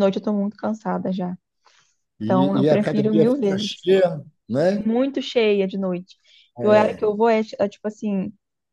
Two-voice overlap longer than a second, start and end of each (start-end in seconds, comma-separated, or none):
2.2-3.8